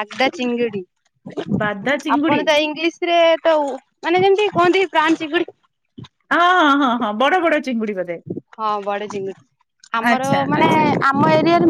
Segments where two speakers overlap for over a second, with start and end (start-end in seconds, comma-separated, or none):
none